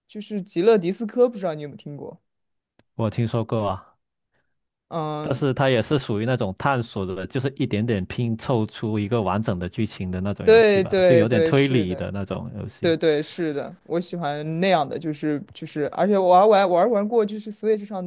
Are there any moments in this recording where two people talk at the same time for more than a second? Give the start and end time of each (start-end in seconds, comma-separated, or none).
10.4-12.1